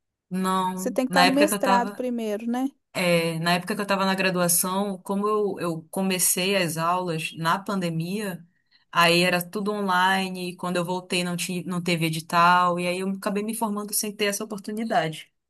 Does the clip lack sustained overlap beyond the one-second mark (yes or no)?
no